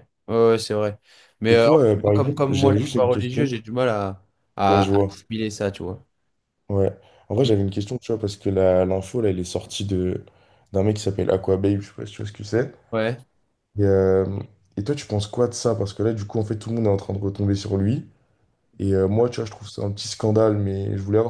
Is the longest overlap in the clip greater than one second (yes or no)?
yes